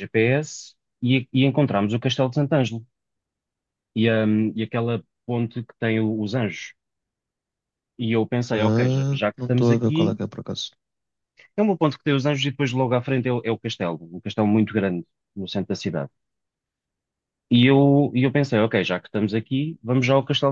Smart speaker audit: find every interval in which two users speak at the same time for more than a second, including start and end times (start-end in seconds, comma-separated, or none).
8.5-10.2